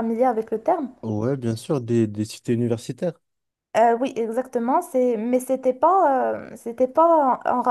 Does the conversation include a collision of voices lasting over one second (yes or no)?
no